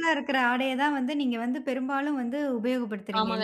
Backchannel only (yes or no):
no